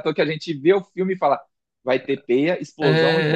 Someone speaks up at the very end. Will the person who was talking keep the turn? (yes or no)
no